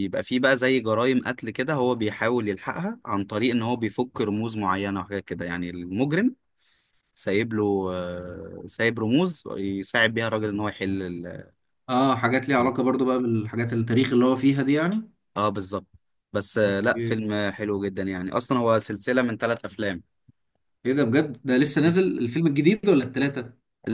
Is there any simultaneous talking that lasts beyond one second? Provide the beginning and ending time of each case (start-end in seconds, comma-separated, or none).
none